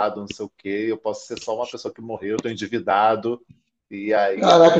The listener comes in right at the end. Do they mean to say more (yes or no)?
yes